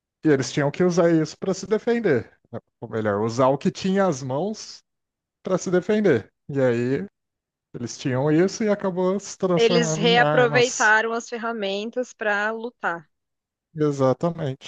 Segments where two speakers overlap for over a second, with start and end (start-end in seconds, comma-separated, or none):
9.6-10.9